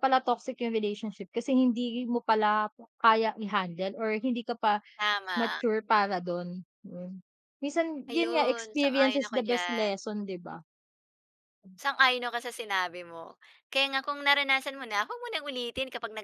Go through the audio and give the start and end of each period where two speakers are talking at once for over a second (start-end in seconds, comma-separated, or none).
8.1-9.9